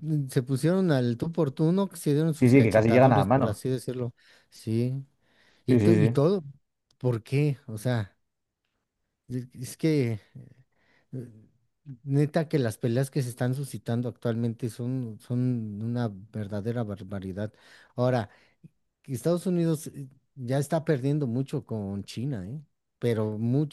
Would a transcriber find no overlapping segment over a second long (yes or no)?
no